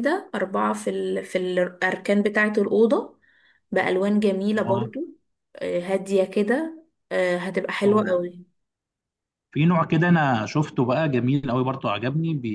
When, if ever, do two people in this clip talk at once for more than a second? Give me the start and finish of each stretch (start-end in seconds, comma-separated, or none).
none